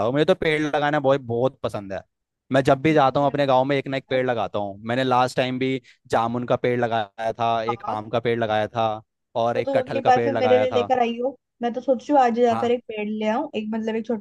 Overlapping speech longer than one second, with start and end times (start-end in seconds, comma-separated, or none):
9.5-10.9